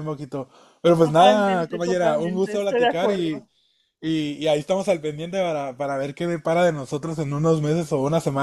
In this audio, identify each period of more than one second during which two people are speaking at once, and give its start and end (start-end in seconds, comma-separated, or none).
1.0-3.4